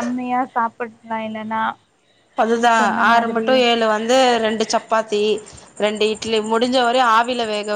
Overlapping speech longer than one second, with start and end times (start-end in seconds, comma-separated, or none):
none